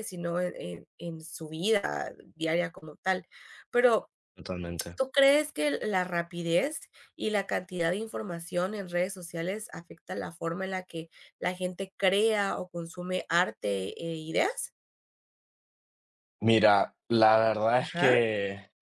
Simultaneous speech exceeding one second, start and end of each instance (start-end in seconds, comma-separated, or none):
none